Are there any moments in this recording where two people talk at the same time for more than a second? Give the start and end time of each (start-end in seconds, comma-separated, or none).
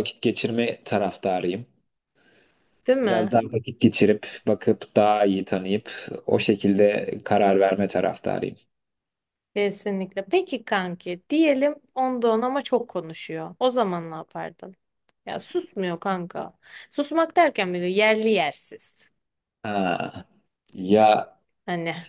none